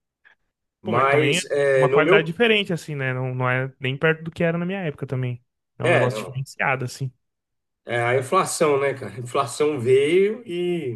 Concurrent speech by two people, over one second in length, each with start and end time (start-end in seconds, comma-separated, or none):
0.8-2.4